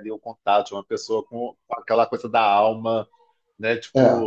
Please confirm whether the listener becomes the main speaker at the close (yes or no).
no